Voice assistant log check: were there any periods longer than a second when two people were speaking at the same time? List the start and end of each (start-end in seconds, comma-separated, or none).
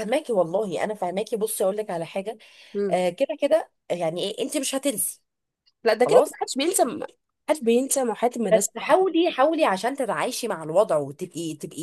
none